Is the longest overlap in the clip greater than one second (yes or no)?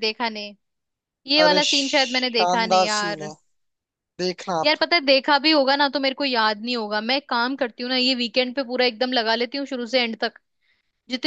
yes